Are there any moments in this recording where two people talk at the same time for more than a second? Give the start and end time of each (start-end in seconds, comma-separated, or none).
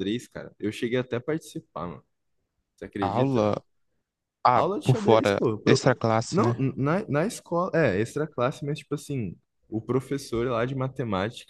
4.5-6.6